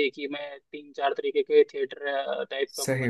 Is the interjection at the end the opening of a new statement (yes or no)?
no